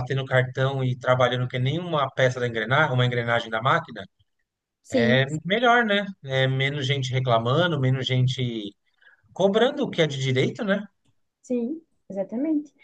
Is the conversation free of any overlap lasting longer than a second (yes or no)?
yes